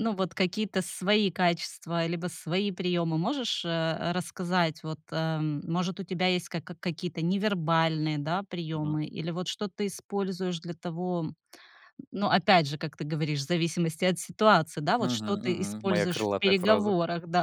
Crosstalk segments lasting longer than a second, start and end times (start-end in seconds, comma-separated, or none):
15.0-16.9